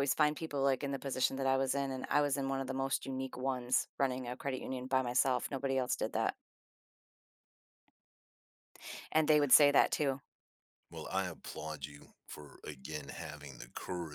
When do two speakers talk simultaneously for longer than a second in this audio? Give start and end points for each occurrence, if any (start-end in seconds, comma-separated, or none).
none